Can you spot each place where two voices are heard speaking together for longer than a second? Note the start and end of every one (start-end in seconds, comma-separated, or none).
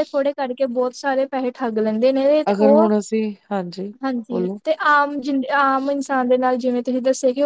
none